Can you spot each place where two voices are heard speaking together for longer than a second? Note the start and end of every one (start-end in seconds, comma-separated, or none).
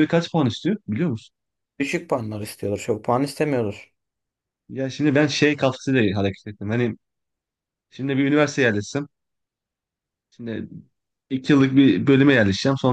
none